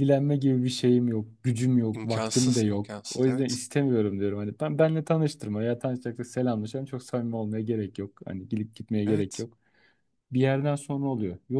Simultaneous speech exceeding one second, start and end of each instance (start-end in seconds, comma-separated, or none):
1.9-3.6